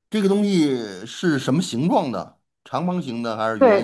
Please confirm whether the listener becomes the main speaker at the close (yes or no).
yes